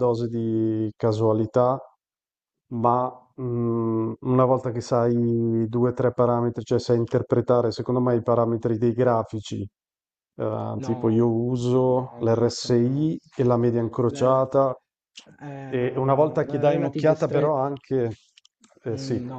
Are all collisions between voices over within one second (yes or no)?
no